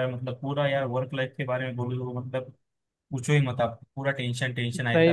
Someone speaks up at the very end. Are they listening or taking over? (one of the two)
taking over